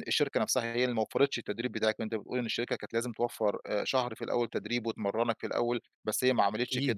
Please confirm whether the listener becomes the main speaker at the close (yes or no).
no